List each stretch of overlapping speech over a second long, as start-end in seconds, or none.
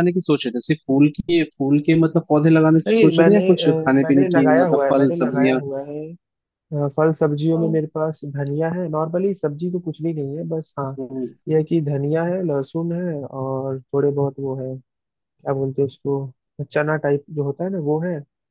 2.9-5.6